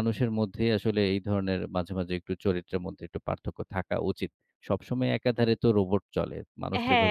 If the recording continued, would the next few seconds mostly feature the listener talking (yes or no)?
yes